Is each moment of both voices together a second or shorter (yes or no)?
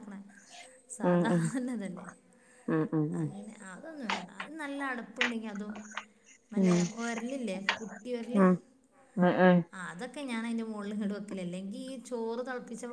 yes